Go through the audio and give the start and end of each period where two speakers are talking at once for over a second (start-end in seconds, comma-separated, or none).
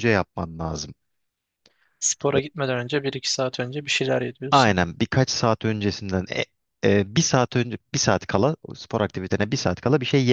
none